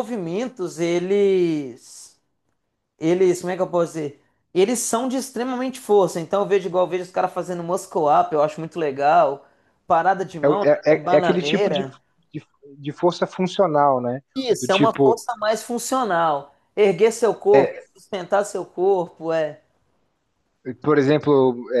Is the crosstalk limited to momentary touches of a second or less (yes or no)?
no